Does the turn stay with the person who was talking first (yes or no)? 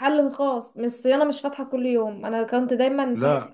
yes